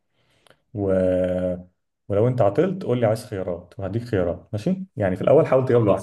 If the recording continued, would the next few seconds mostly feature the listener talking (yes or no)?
no